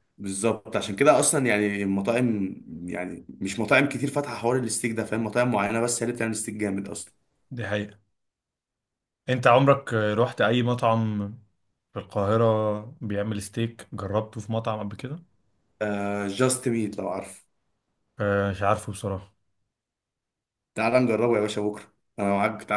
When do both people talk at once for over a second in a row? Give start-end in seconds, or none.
none